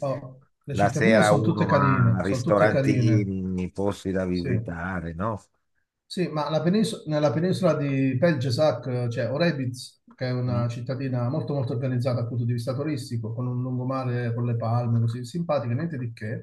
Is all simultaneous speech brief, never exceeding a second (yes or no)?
no